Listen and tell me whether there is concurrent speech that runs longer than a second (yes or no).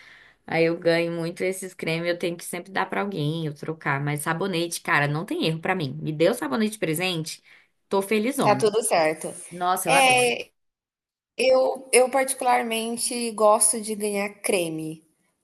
no